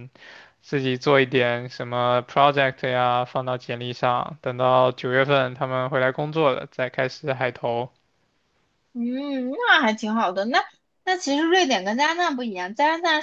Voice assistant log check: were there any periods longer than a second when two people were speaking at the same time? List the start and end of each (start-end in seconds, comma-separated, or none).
none